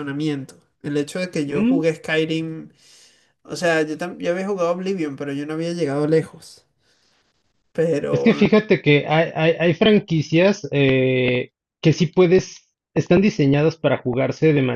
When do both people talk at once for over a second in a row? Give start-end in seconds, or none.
none